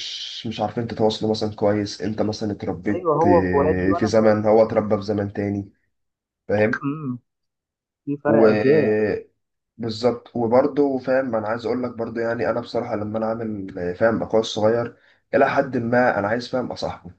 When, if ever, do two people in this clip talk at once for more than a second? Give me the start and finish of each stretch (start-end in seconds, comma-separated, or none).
2.9-4.2